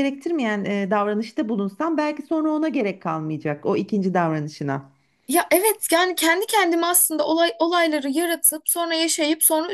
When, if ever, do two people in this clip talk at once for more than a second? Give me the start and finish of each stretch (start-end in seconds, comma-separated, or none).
none